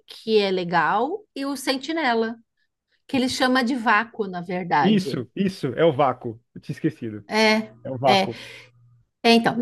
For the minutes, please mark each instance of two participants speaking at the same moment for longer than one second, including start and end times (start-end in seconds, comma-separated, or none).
none